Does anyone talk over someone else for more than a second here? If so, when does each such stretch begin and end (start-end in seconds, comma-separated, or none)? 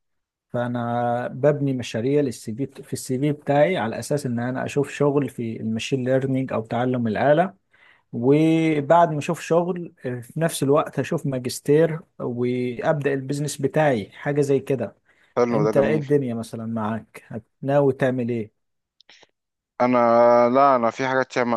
none